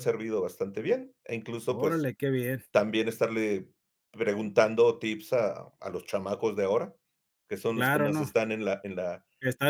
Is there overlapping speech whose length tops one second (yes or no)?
no